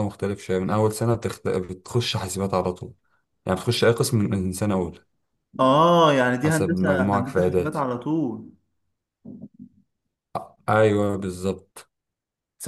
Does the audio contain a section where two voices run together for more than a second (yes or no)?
yes